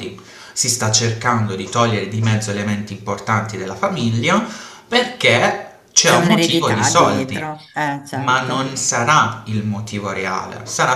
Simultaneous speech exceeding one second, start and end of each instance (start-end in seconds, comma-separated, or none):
6.0-7.5